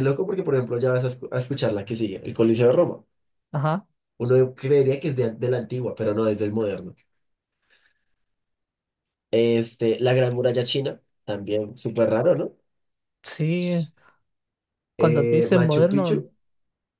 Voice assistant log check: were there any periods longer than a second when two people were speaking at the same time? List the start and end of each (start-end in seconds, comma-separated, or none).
15.0-16.3